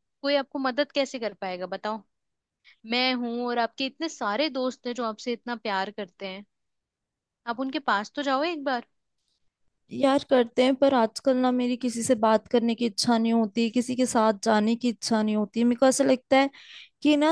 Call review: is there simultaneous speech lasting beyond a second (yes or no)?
no